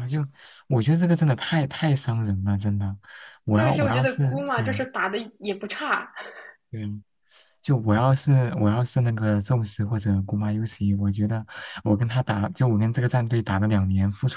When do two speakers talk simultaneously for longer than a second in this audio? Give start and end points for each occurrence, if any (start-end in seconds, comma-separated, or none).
3.5-4.9